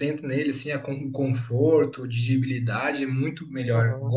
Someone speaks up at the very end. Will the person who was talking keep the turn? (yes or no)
yes